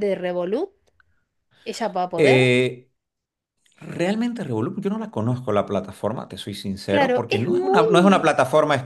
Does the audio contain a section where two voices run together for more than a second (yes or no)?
yes